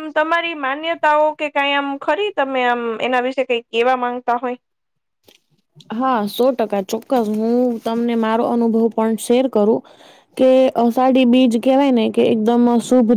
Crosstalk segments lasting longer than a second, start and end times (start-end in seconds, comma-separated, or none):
none